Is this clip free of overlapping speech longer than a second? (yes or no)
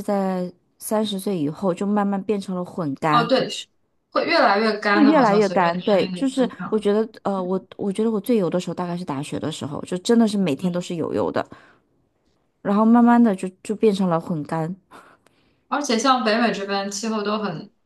no